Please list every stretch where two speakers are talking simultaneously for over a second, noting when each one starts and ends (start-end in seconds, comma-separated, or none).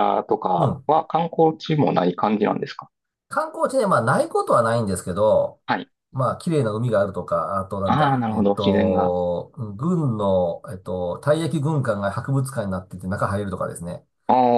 7.8-9.2